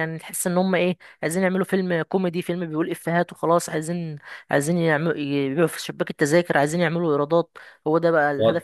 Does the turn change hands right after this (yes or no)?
yes